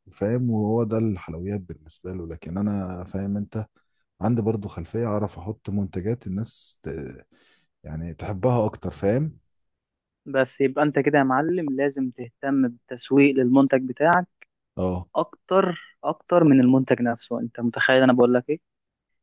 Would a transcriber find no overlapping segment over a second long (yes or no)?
yes